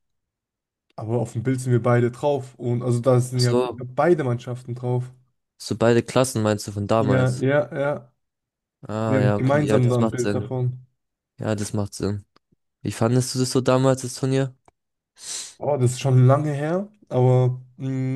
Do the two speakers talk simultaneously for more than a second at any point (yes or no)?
yes